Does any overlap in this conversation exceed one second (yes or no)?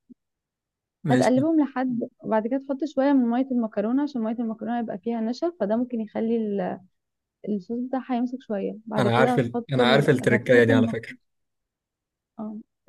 yes